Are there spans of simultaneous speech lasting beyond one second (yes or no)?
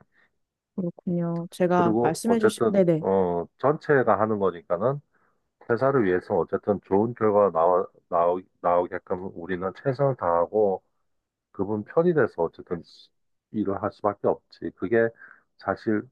yes